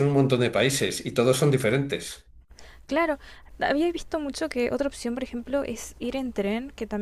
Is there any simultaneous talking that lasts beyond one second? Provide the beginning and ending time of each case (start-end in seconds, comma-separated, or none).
none